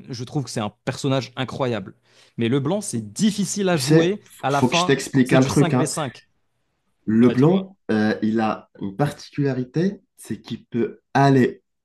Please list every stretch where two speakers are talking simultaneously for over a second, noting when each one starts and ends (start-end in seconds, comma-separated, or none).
3.7-5.9